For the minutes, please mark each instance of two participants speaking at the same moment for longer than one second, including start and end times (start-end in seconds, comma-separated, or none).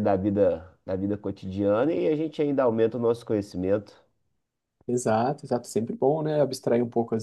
none